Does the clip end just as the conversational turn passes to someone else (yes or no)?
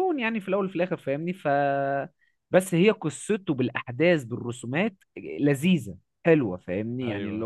no